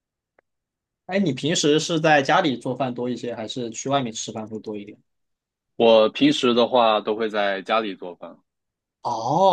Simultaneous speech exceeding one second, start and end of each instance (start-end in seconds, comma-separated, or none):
none